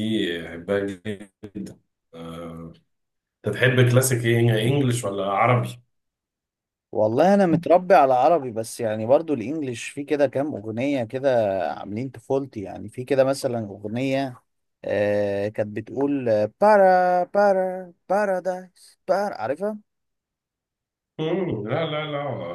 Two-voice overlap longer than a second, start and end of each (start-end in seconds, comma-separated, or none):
none